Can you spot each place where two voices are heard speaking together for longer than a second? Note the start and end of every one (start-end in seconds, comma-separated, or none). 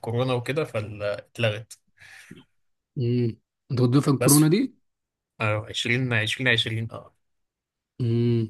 none